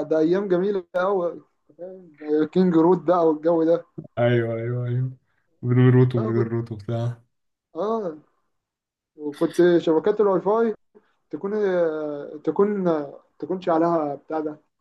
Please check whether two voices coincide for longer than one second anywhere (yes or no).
no